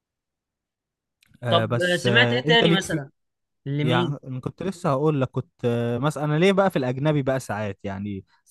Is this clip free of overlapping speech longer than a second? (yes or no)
no